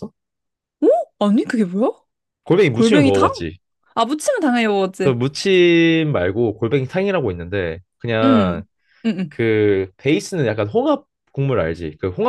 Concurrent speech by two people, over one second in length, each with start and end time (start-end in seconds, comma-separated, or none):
none